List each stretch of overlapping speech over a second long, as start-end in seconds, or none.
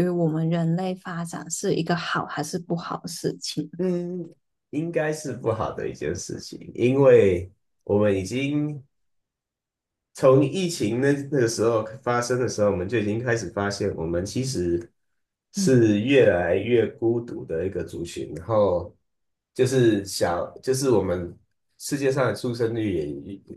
none